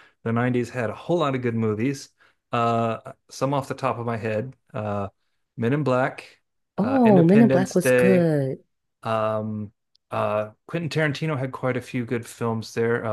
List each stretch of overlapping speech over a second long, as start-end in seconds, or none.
6.8-8.3